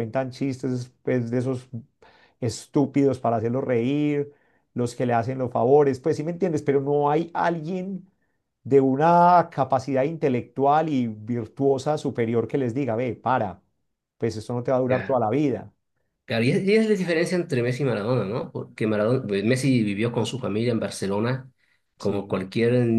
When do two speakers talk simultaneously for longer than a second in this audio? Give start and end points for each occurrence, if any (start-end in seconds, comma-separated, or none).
none